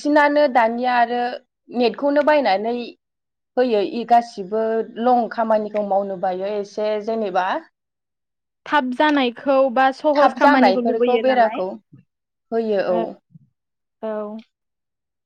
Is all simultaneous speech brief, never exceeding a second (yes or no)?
no